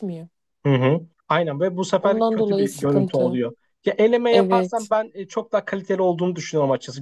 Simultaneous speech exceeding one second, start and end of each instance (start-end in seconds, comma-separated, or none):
2.0-3.4